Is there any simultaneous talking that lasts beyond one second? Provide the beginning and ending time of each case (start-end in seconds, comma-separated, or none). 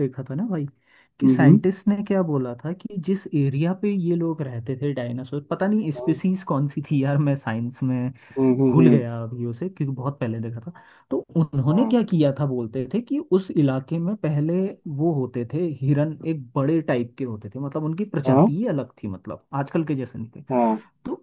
none